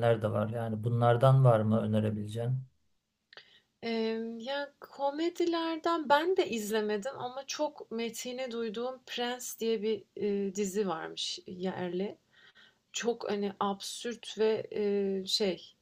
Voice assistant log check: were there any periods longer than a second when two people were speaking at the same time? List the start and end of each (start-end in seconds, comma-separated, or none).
none